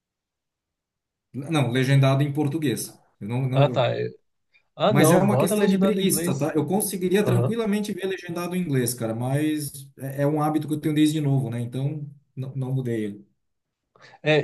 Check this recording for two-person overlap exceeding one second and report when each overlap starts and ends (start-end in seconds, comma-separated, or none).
4.9-6.5